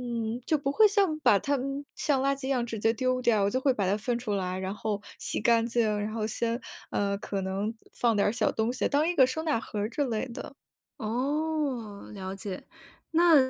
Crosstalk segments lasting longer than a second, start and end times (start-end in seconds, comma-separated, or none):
none